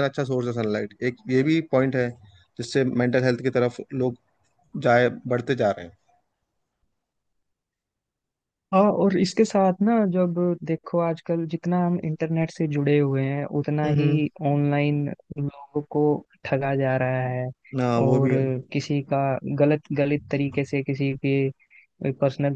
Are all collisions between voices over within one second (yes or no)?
yes